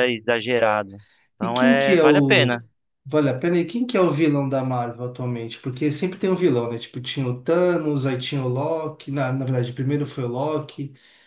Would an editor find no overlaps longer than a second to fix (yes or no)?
no